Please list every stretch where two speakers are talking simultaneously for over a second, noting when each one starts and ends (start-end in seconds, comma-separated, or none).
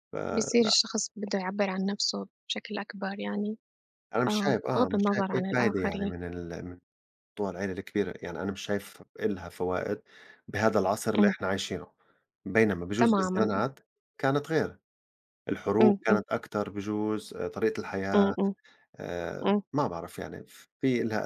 4.3-6.1